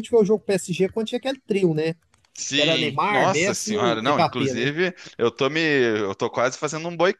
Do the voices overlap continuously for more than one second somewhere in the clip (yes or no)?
yes